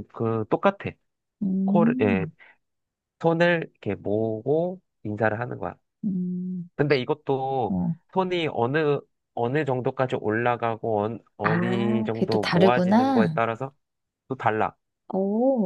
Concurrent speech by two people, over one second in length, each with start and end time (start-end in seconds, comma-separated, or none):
11.4-13.4